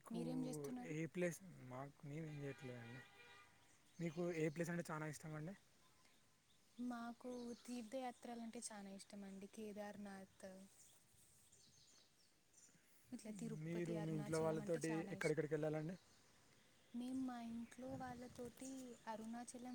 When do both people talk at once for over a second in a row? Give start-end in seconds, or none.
13.7-15.5